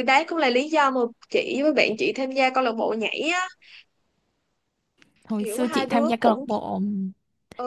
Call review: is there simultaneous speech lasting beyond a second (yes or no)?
yes